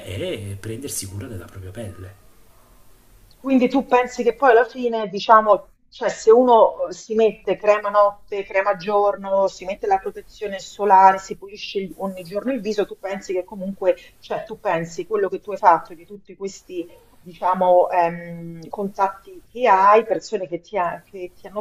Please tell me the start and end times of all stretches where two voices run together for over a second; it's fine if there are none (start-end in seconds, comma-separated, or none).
none